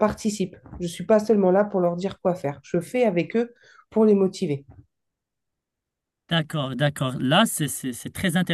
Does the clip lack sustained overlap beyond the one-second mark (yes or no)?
yes